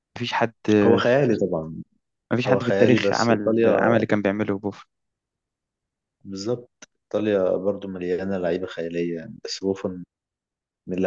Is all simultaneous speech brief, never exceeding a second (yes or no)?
no